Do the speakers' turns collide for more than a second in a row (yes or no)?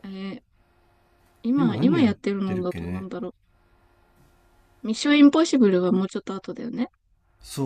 yes